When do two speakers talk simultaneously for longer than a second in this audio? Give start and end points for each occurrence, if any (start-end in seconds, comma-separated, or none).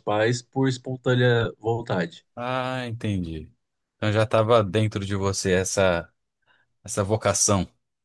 none